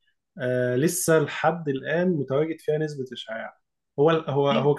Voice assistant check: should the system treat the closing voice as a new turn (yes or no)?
no